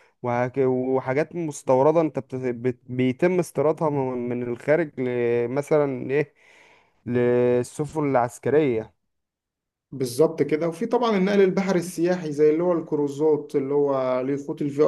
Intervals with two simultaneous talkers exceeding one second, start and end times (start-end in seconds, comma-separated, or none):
none